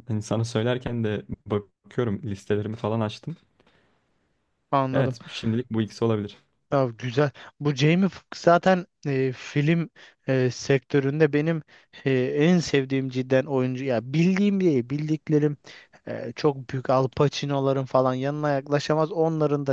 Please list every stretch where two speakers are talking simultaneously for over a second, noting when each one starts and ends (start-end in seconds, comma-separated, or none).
none